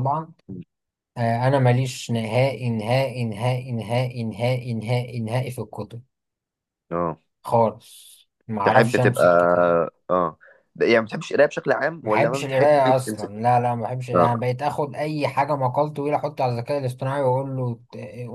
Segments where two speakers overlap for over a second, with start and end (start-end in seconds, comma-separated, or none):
12.0-13.3